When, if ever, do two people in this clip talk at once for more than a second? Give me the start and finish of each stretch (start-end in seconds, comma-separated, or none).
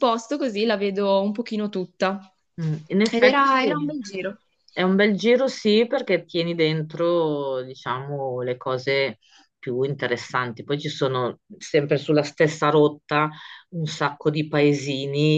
none